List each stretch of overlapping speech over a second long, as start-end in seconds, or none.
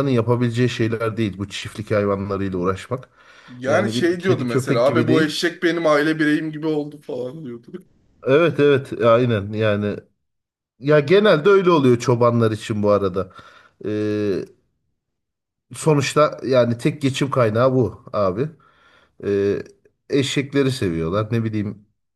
3.7-5.4